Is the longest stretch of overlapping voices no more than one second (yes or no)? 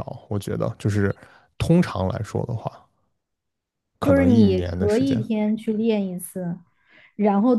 no